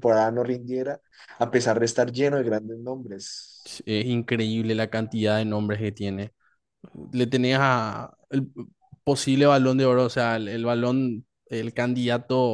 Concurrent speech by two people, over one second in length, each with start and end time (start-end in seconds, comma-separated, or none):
none